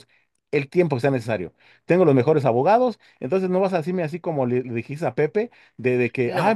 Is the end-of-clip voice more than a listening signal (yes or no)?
no